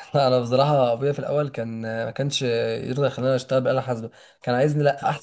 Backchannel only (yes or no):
yes